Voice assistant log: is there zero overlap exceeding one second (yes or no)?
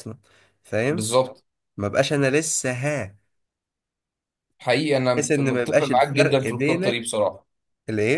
no